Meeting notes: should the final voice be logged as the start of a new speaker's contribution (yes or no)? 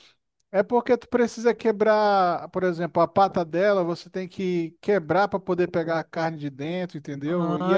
yes